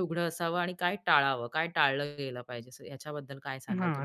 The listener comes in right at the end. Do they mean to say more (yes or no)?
yes